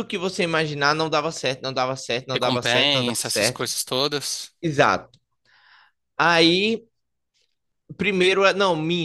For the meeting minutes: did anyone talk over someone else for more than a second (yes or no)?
yes